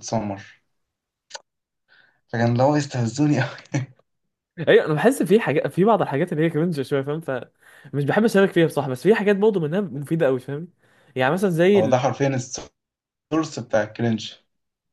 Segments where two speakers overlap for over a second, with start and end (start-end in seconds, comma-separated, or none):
none